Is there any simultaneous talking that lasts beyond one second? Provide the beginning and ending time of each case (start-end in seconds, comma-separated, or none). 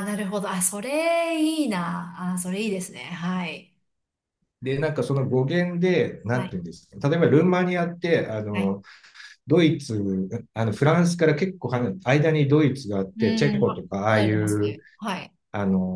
13.2-14.8